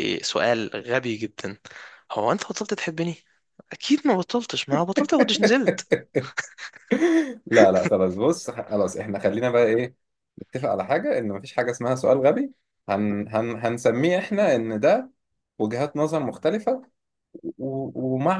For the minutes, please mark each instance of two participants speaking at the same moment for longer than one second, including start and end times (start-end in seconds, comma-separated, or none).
none